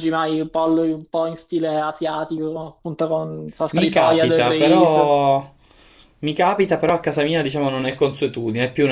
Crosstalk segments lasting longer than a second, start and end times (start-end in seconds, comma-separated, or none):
3.7-5.2